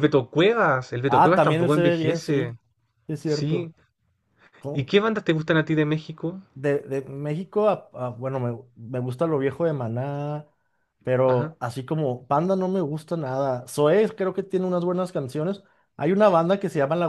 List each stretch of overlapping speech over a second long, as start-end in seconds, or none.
1.1-2.5